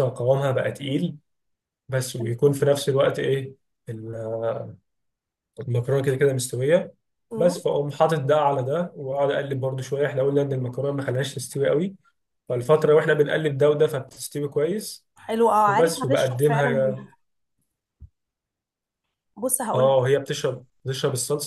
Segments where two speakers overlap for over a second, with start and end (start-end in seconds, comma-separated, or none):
15.7-17.1